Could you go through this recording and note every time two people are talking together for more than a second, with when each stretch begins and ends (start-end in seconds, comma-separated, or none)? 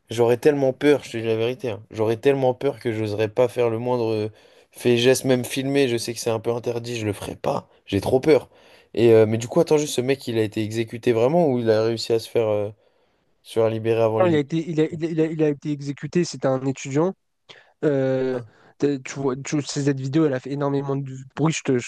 none